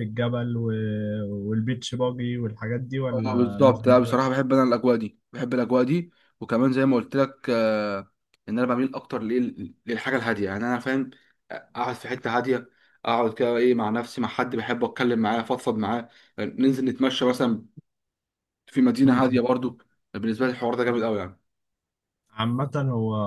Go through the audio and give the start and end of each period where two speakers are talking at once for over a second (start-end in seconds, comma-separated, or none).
3.1-4.4